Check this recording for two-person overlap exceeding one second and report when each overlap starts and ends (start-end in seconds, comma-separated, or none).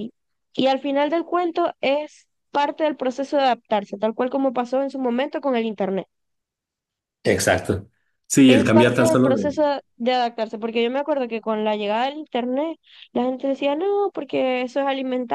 8.4-9.7